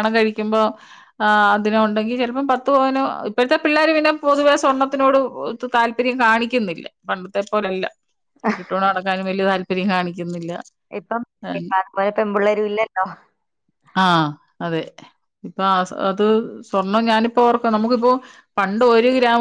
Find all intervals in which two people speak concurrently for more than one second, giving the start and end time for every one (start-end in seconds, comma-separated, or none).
none